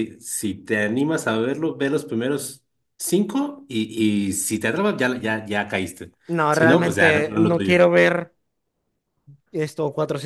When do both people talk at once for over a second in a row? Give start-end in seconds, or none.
6.5-7.8